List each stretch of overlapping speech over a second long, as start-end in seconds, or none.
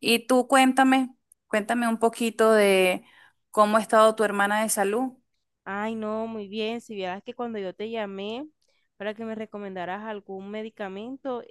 none